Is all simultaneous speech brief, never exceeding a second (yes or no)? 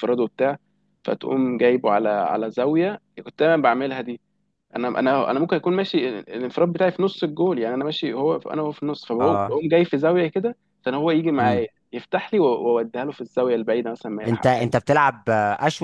yes